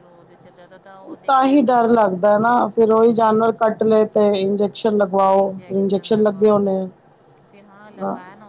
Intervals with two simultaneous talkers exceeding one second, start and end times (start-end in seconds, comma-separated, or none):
5.4-6.6